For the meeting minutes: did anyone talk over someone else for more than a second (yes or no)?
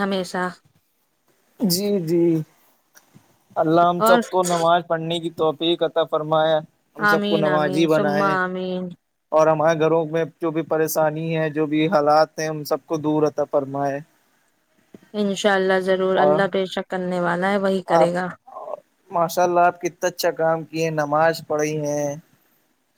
yes